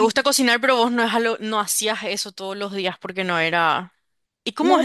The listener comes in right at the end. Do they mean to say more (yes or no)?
yes